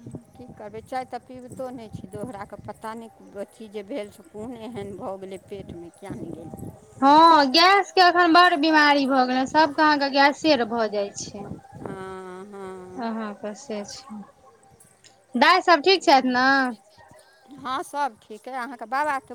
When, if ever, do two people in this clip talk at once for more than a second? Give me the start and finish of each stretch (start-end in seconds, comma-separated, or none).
none